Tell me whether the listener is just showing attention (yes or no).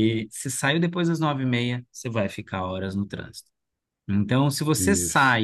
yes